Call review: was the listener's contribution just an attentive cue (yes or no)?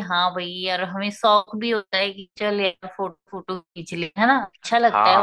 no